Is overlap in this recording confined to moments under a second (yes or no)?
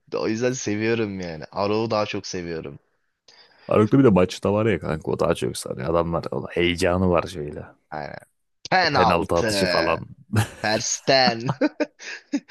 no